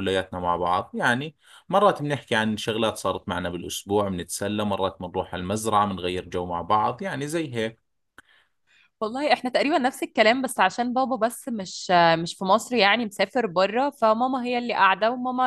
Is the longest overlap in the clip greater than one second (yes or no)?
no